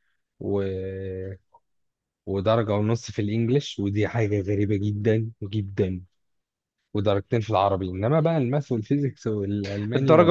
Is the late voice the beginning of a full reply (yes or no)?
yes